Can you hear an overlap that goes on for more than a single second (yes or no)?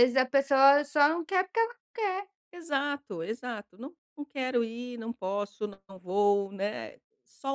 no